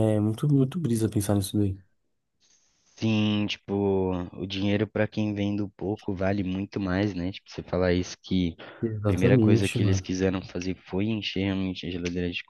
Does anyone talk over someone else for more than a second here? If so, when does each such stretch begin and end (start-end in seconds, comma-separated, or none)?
8.8-10.1